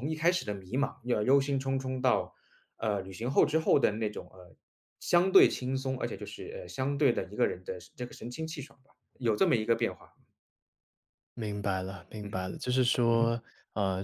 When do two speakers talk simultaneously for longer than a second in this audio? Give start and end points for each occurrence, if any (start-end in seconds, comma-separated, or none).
none